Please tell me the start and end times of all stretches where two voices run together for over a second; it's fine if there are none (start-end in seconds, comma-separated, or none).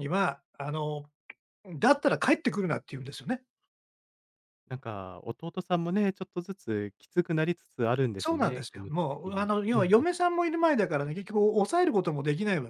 8.2-10.1